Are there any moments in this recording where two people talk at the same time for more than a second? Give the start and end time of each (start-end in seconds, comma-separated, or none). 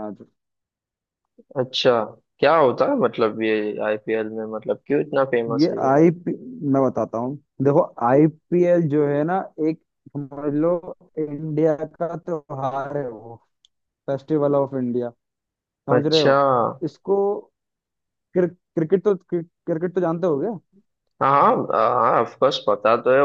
none